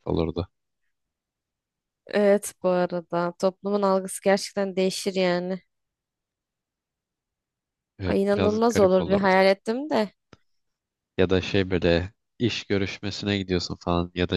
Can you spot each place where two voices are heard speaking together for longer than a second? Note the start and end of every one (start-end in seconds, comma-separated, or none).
8.1-9.3